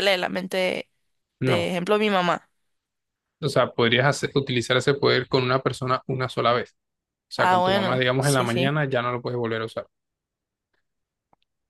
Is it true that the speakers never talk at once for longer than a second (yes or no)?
no